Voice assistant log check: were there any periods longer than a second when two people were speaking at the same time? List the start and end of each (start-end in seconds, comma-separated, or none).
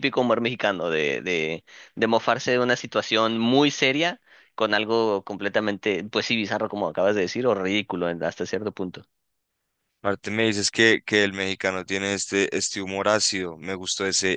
none